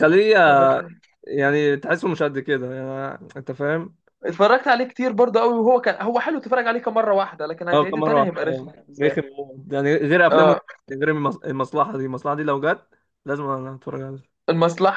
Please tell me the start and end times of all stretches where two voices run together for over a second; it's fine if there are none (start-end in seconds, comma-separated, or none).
7.7-9.2